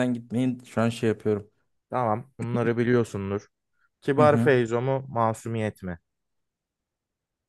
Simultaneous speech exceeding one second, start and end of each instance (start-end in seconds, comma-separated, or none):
none